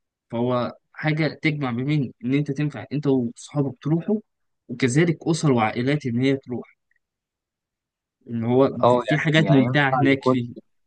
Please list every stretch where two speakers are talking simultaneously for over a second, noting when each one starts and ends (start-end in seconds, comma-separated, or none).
8.8-10.4